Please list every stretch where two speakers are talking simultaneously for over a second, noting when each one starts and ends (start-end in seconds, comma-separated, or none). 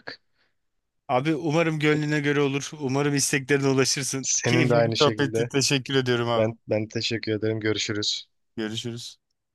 4.2-5.5